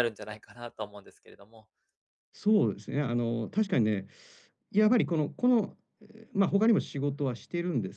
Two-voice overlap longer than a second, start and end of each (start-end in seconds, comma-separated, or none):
none